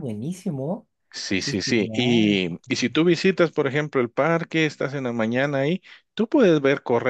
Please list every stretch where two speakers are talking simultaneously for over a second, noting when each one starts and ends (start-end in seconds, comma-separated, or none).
1.4-3.0